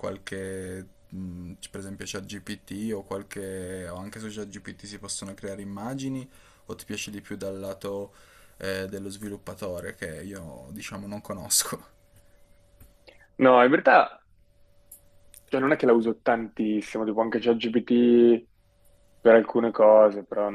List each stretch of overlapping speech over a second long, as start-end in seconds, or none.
none